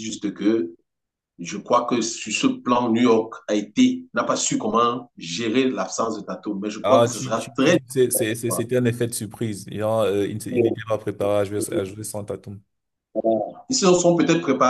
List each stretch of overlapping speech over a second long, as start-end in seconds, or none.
6.8-8.7